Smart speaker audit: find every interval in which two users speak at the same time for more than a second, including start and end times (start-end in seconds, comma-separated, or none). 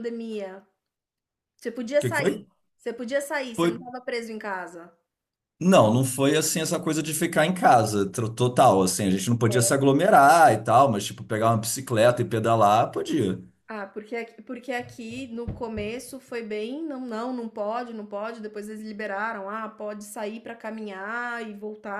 none